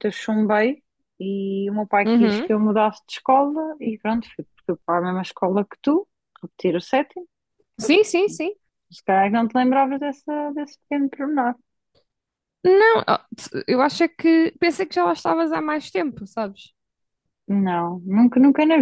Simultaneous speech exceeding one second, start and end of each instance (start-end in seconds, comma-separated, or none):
none